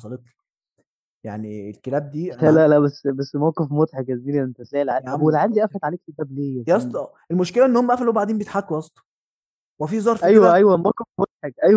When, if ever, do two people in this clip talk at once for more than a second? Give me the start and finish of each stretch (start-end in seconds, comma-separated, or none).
none